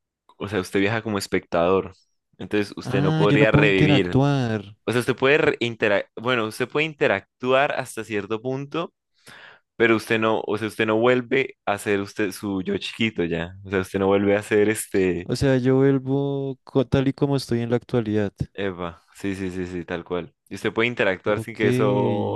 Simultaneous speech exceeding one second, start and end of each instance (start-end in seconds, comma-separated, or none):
2.8-4.2